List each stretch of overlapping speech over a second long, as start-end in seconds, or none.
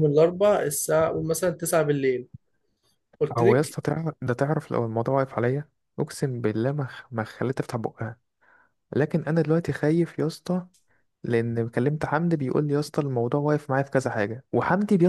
none